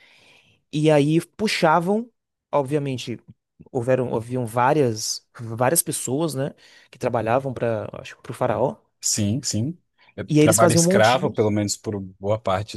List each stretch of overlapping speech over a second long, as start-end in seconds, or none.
10.3-11.5